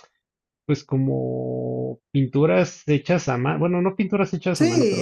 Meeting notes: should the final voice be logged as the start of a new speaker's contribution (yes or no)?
no